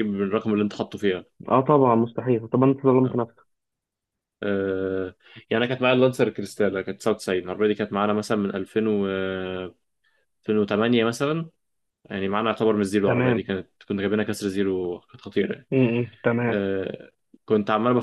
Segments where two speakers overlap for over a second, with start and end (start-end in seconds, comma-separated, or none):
none